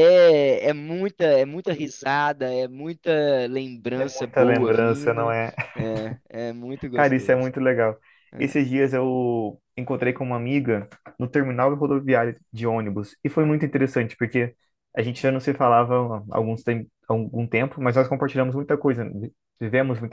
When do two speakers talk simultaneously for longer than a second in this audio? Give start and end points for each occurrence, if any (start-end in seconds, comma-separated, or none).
4.0-5.4